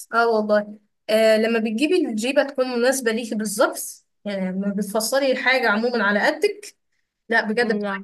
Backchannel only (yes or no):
yes